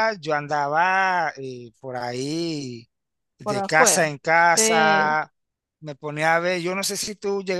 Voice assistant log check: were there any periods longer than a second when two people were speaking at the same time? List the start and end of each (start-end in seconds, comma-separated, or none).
3.4-5.2